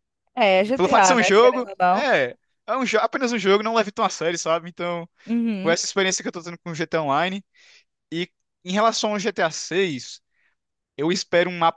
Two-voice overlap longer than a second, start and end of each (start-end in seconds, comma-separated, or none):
0.7-2.1